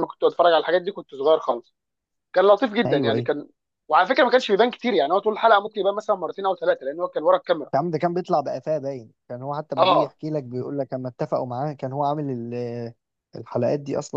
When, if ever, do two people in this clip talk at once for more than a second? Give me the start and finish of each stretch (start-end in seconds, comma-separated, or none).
none